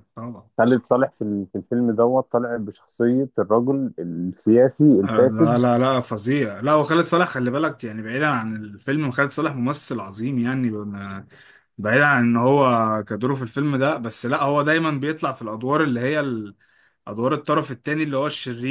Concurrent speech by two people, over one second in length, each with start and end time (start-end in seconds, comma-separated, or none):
none